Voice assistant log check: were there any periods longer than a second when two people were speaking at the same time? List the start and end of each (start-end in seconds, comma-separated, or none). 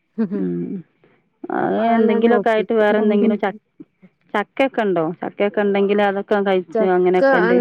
1.6-3.4